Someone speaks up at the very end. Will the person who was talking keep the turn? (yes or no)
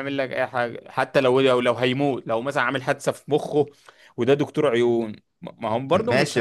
no